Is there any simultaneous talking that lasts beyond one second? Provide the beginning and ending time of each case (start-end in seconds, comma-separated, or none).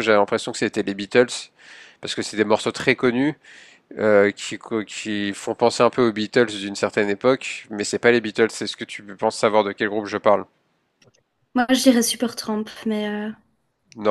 none